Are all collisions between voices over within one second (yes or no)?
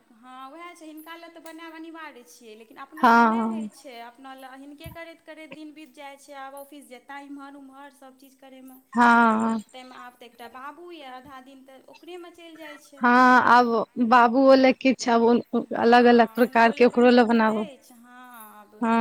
no